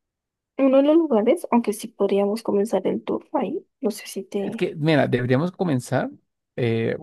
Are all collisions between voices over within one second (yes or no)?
yes